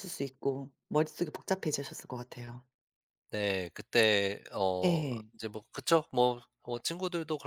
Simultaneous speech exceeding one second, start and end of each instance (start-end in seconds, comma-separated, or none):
none